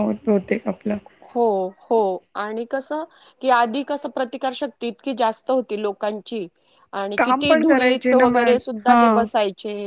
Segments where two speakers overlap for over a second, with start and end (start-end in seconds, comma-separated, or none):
7.2-9.2